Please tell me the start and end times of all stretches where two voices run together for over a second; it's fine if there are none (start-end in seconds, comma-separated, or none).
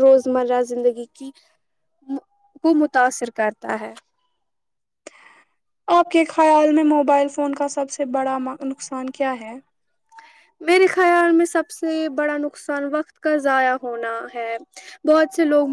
none